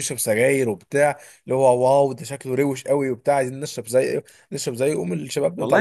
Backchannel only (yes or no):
no